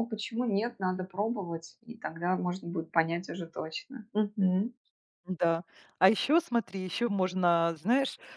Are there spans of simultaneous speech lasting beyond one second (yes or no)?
no